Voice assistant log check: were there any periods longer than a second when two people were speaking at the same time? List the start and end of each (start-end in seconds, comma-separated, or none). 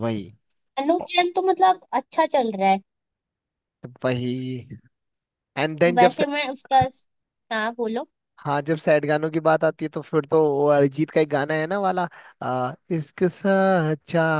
none